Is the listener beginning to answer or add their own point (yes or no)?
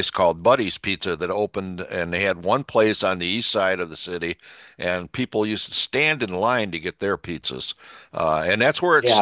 no